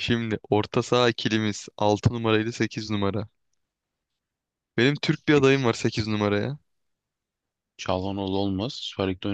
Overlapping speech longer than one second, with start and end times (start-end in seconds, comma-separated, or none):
none